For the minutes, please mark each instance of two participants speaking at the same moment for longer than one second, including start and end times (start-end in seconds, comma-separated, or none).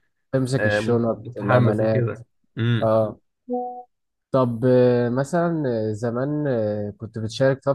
0.6-2.2